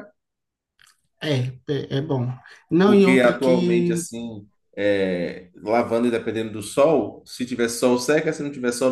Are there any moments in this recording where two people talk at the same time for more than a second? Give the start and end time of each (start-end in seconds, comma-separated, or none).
2.8-4.0